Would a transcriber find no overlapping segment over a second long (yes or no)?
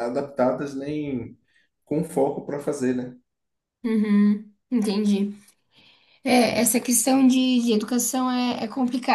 yes